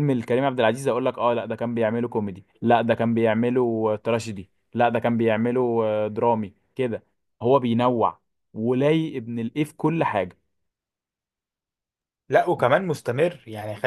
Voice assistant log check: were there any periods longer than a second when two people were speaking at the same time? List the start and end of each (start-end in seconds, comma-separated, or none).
none